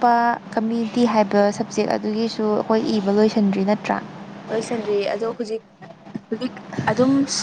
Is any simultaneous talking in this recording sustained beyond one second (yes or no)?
no